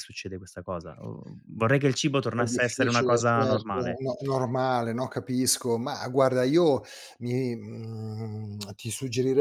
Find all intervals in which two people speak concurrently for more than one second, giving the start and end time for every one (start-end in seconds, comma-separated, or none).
2.4-4.0